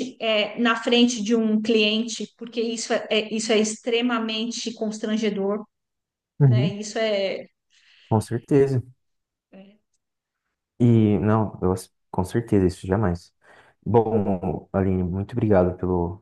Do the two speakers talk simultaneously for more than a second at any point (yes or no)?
no